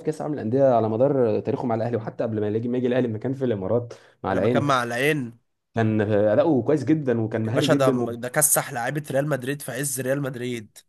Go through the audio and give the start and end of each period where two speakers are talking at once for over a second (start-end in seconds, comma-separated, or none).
none